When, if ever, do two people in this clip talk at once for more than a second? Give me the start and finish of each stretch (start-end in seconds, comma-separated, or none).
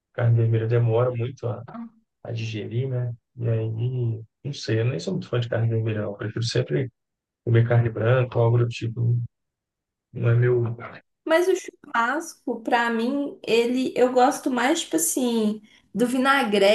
none